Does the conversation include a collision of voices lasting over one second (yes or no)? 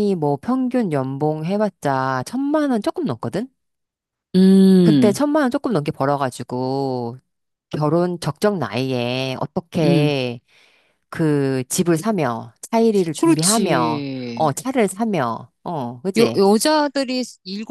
yes